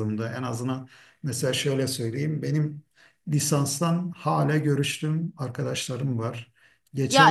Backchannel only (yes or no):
no